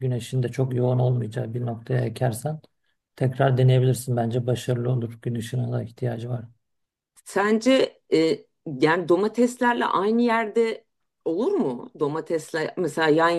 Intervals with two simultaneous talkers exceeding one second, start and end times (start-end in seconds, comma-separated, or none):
none